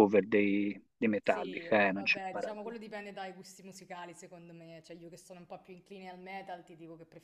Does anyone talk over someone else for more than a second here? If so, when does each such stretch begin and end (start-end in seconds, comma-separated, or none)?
1.2-2.8